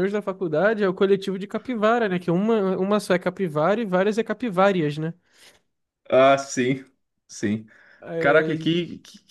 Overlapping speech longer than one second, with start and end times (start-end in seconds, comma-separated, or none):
none